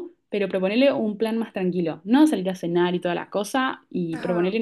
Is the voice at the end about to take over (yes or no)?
no